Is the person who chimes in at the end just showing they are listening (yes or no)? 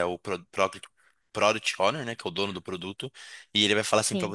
yes